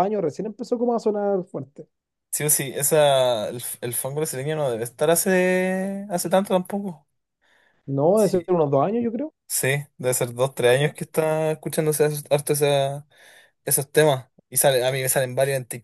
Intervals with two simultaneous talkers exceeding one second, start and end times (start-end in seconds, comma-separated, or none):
none